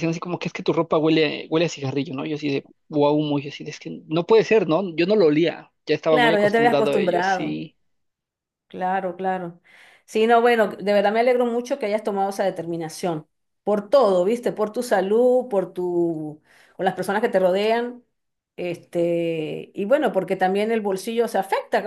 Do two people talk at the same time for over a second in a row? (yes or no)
yes